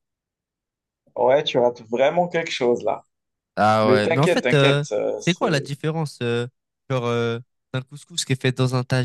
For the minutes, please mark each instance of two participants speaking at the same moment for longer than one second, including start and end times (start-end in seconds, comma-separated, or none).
3.8-5.7